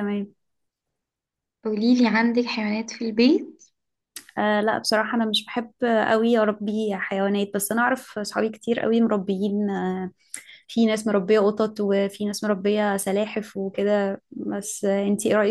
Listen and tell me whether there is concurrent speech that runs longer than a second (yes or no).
no